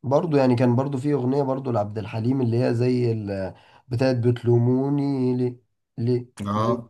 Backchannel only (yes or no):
yes